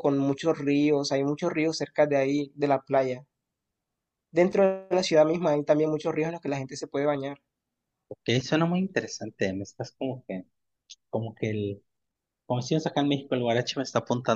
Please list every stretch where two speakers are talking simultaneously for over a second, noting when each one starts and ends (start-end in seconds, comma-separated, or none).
none